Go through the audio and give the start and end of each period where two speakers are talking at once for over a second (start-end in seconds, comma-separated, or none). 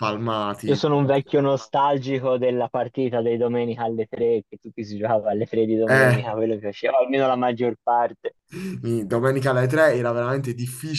none